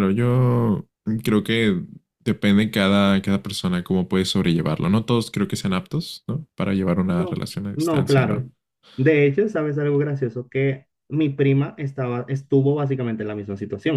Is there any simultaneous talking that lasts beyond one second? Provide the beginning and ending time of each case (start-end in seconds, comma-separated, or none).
7.1-8.4